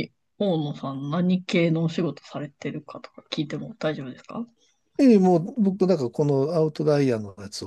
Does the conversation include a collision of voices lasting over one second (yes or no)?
no